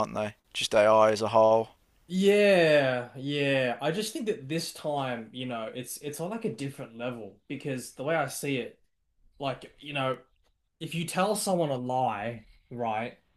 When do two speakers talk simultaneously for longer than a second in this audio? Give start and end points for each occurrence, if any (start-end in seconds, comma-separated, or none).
none